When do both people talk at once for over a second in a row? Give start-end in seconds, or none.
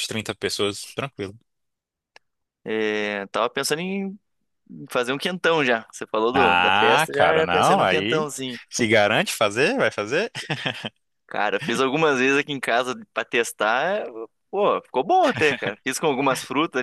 6.3-8.2